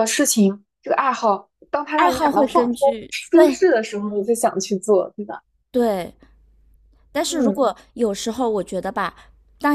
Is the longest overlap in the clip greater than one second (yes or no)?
yes